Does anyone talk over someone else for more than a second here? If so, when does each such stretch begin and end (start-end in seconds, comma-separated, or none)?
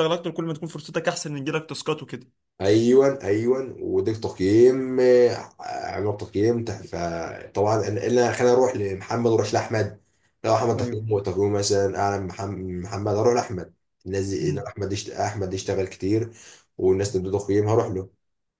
none